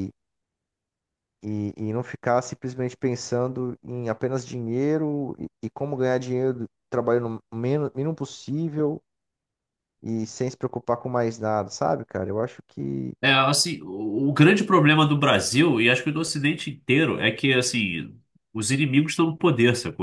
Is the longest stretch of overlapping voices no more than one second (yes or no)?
yes